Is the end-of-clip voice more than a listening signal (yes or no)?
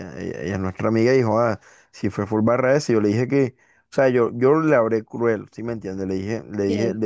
no